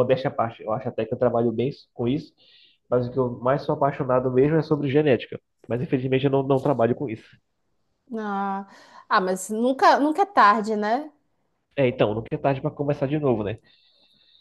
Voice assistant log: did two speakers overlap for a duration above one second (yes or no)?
no